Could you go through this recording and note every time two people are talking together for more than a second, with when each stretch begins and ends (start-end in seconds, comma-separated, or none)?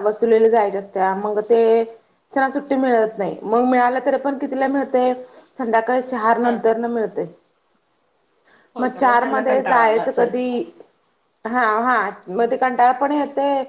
8.8-10.3